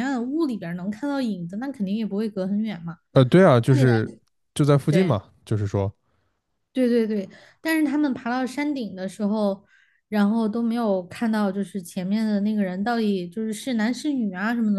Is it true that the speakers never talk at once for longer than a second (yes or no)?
yes